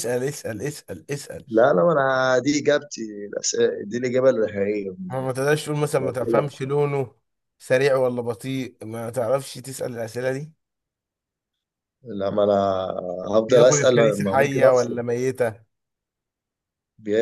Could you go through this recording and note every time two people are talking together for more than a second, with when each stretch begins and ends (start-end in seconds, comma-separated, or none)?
13.5-15.0